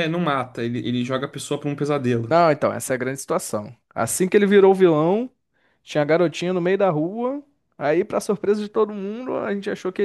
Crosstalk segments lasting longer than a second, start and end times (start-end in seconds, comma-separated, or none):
none